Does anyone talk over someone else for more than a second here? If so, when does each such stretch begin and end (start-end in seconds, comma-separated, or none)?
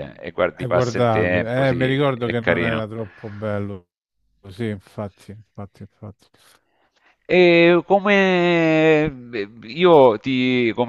0.5-2.9